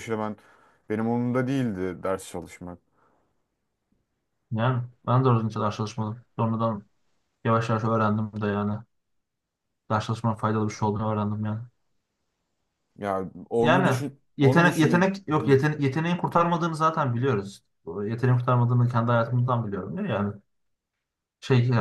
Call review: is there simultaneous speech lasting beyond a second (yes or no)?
yes